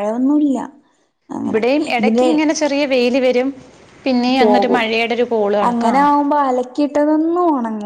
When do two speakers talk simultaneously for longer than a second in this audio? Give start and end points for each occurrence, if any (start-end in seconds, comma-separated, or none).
none